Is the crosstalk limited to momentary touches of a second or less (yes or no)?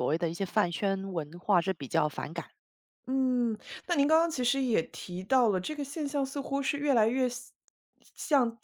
yes